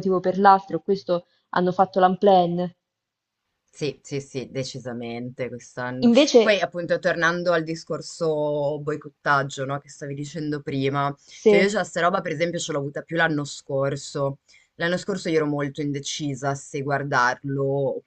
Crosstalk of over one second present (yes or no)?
no